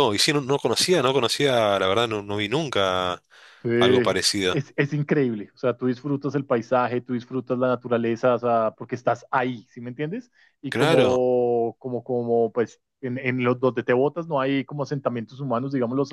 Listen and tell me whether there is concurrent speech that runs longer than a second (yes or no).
no